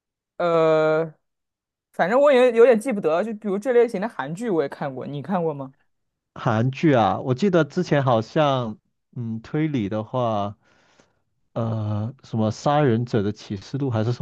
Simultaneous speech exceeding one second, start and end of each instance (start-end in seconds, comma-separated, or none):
none